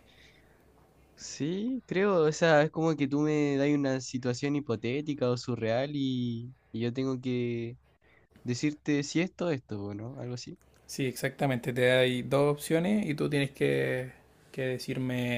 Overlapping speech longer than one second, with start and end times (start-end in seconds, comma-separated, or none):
none